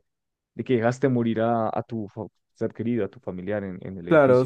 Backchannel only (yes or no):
no